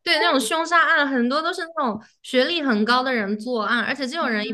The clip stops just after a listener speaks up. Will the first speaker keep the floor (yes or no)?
yes